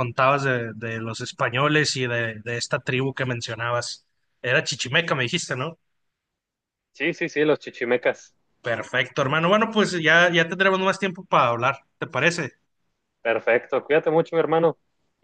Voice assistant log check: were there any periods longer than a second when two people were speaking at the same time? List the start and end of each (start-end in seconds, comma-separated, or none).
none